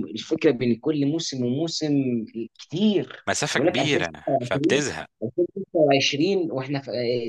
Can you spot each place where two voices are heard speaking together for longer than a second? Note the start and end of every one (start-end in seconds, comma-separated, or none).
3.3-4.8